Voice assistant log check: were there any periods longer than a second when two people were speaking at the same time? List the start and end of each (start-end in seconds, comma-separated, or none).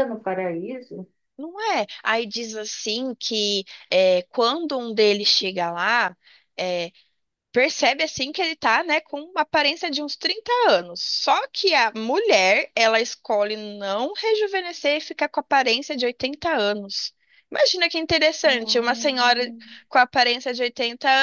18.4-19.8